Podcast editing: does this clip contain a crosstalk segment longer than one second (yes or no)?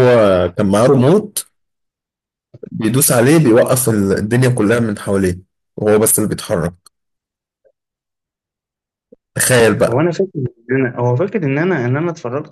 no